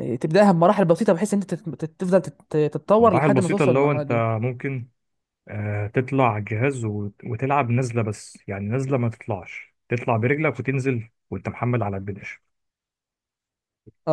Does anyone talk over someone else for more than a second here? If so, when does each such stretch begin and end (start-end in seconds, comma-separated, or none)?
3.0-4.2